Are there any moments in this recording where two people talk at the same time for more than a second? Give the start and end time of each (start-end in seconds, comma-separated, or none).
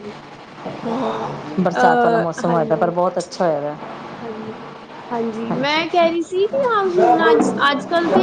1.6-2.9